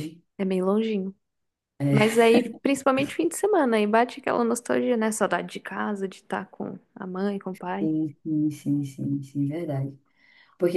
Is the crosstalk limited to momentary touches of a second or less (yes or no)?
yes